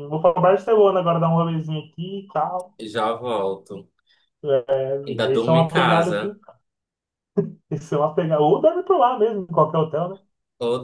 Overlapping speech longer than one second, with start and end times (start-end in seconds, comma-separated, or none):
5.1-6.3